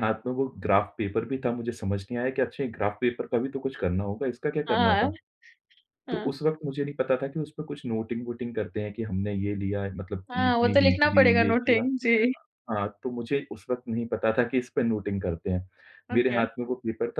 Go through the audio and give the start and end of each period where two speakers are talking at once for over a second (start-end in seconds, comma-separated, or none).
10.3-11.9